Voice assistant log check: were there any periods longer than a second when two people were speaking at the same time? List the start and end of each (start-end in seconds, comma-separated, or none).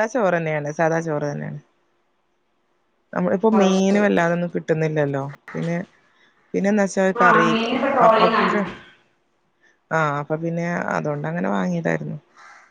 none